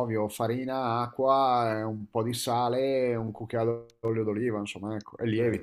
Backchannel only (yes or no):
no